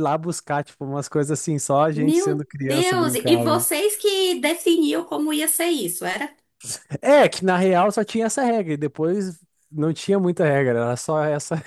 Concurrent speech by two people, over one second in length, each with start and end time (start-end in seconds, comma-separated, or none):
1.9-3.6